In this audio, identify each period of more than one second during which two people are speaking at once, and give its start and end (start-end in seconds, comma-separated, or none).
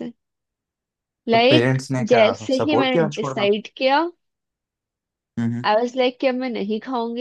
1.3-3.5